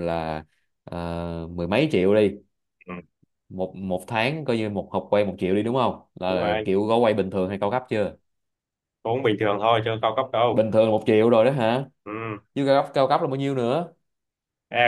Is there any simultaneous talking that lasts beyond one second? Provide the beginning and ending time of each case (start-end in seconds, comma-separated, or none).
none